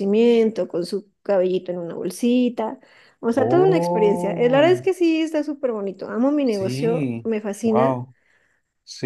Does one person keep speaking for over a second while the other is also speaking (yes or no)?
yes